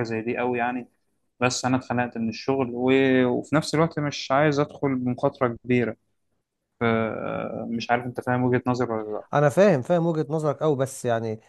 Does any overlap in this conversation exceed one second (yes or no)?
no